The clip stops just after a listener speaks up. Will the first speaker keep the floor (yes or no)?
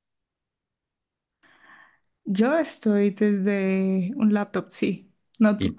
no